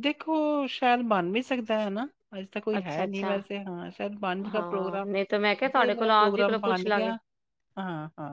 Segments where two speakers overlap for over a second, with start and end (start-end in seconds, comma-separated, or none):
5.7-7.1